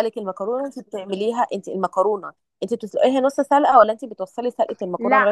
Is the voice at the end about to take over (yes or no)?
yes